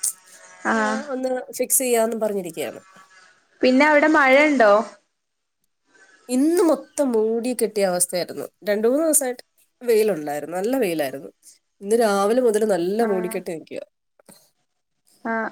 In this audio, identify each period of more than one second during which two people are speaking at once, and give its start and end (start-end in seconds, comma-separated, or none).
none